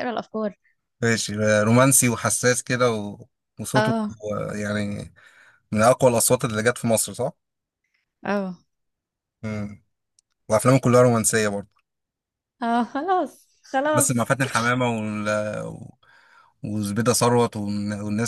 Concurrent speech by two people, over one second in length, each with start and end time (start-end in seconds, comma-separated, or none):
none